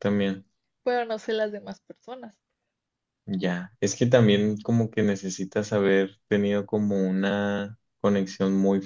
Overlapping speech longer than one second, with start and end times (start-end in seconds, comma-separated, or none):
none